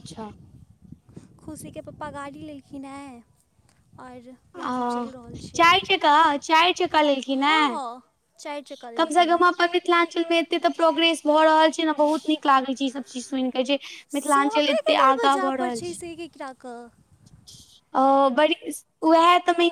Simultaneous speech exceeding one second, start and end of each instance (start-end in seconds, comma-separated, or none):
14.2-15.8